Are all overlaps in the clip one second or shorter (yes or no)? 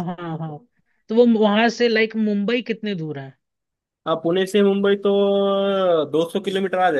yes